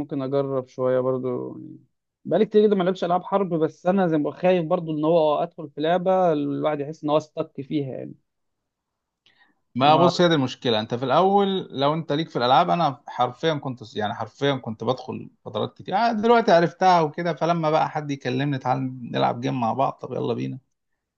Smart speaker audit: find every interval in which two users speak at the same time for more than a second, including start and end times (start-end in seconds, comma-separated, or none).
none